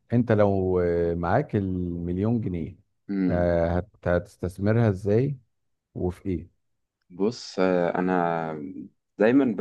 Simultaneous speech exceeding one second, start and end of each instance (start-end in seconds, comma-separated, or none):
none